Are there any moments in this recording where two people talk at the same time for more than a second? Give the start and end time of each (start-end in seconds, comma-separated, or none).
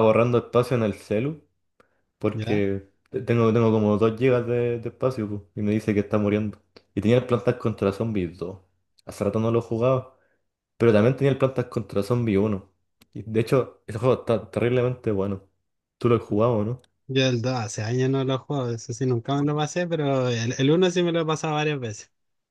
none